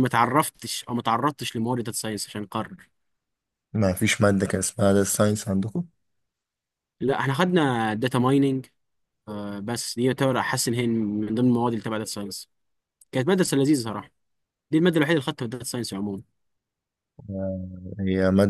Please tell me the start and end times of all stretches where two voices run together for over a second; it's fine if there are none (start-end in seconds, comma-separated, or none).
none